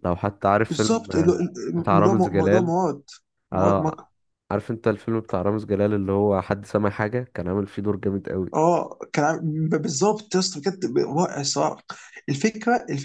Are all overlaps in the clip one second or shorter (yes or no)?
no